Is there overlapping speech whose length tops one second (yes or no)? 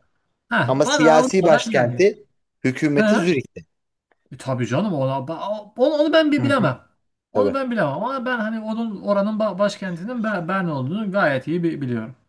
yes